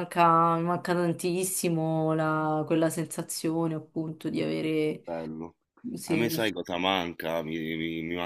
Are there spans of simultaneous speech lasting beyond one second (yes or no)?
no